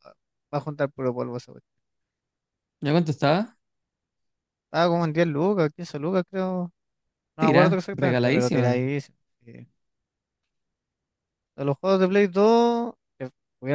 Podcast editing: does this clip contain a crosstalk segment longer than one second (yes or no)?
yes